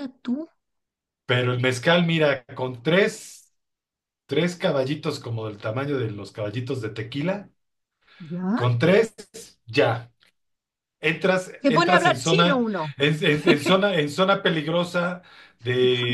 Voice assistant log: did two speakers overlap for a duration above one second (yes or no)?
yes